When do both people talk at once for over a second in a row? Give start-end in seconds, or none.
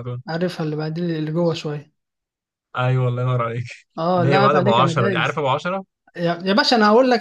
4.1-5.4